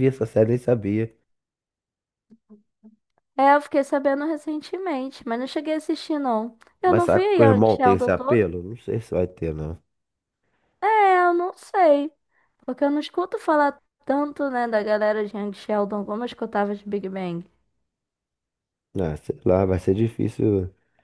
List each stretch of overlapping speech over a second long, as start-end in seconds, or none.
6.9-8.4